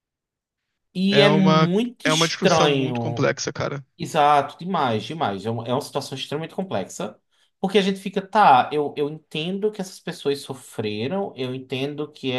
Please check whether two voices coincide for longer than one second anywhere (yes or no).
yes